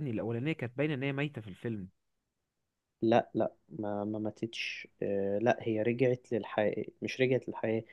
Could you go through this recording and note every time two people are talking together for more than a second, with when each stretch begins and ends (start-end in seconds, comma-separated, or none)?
none